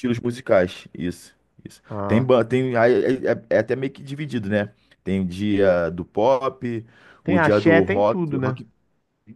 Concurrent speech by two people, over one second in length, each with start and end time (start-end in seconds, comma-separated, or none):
7.3-8.6